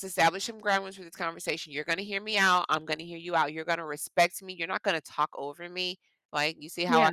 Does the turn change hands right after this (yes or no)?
no